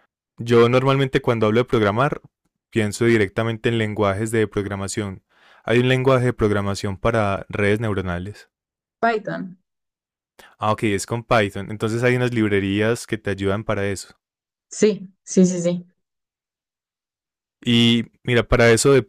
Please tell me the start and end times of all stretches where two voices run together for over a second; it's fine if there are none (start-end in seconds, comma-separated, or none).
none